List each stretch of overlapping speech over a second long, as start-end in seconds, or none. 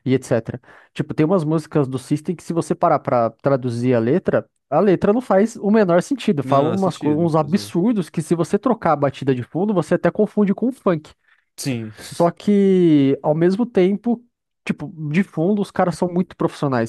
6.4-7.7